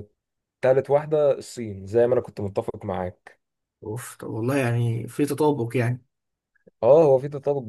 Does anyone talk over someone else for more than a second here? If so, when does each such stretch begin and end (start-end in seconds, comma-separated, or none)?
none